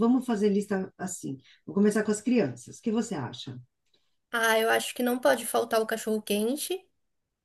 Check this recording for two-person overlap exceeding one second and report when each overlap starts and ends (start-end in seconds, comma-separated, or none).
none